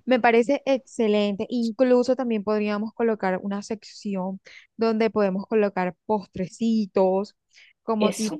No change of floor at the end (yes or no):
yes